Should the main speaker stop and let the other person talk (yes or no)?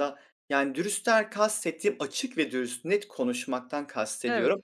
no